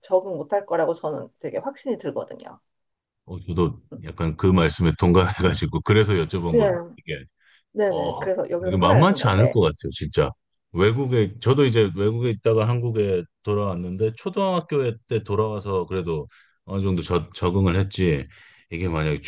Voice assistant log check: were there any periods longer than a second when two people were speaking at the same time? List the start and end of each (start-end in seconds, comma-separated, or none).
7.8-9.5